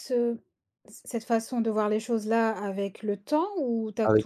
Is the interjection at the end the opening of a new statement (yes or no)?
yes